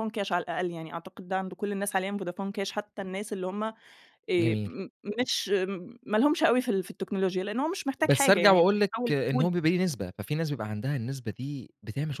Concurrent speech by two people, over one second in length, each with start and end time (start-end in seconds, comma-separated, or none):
8.0-9.5